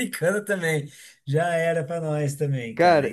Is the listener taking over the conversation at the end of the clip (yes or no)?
yes